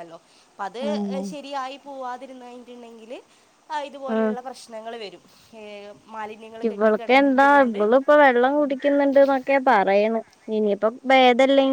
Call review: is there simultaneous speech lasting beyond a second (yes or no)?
no